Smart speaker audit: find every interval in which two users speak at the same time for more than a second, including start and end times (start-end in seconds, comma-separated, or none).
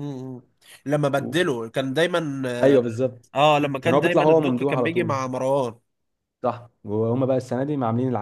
3.8-5.2